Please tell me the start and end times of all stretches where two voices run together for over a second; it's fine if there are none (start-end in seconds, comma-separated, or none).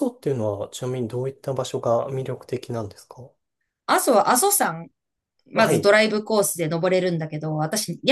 none